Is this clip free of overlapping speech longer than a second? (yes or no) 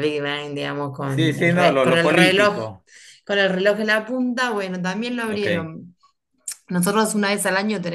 no